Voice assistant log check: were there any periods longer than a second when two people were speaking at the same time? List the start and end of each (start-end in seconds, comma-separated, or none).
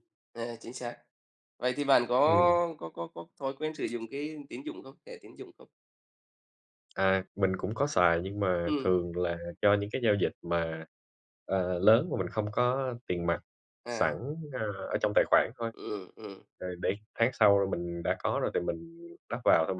none